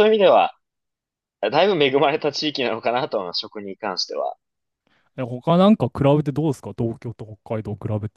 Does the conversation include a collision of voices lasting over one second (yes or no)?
no